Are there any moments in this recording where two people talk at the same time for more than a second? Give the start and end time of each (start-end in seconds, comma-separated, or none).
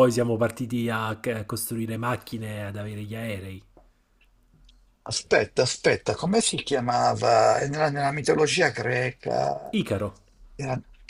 none